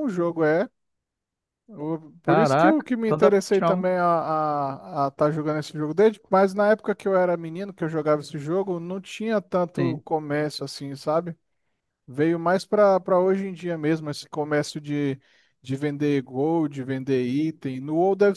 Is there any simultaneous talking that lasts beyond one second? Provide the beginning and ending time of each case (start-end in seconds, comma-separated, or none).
2.3-3.8